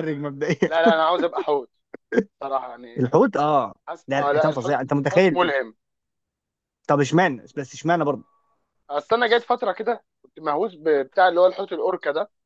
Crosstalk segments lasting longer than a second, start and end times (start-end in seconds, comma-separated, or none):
3.9-5.5